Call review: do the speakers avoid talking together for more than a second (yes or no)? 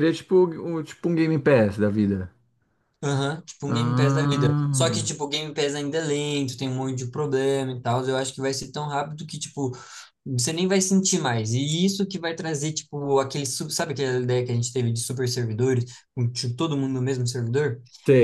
no